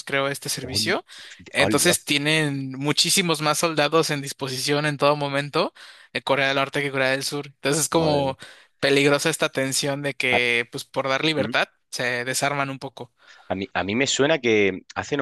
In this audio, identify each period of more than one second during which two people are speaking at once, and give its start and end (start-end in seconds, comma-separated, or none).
none